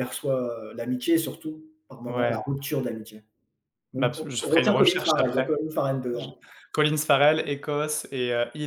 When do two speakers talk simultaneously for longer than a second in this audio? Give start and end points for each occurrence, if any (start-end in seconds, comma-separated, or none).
4.0-5.5